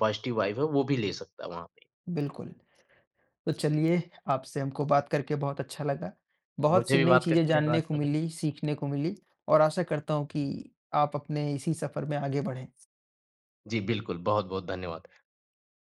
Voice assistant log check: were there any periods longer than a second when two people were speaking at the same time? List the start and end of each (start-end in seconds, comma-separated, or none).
6.7-8.2